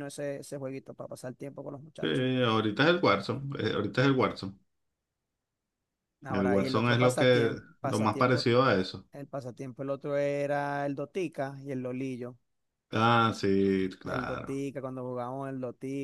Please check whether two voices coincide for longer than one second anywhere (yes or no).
yes